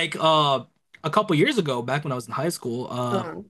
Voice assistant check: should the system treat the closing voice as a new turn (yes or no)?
no